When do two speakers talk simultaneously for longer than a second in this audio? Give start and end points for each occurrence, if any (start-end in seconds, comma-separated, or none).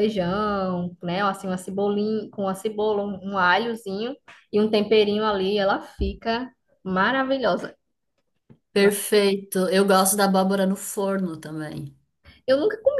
none